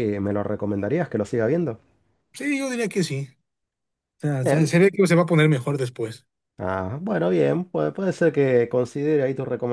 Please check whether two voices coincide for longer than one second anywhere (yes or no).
no